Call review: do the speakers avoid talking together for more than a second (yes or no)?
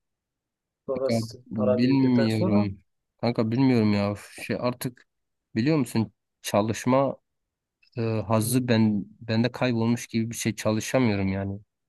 no